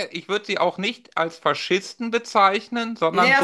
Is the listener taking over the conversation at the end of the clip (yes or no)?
yes